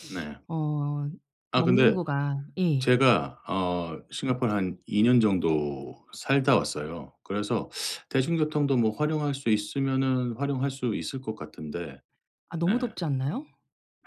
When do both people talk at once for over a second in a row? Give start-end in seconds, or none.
none